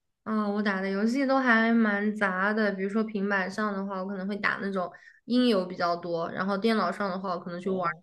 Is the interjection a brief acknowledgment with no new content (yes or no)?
yes